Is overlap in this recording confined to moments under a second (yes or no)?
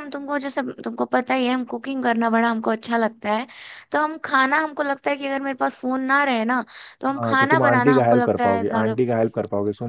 no